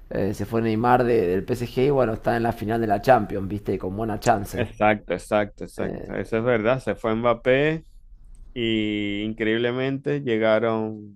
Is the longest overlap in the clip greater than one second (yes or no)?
no